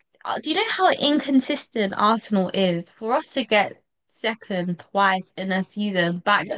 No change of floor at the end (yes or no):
no